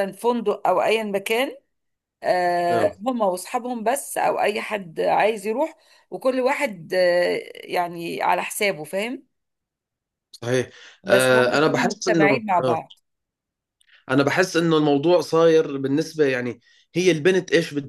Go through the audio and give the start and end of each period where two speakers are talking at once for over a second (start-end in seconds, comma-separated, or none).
11.1-12.8